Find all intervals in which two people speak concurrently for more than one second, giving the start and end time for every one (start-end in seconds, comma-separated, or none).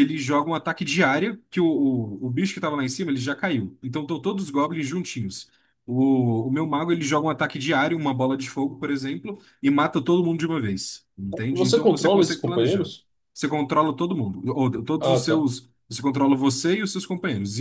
11.5-12.9